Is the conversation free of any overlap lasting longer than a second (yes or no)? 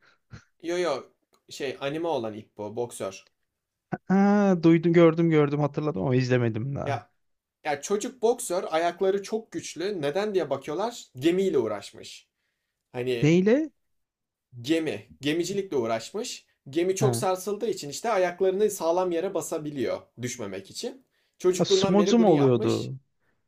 no